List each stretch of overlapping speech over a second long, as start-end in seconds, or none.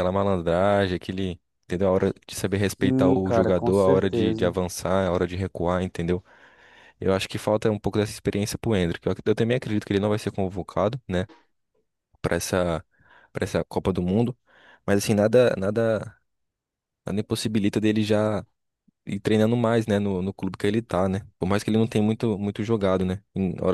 2.8-4.5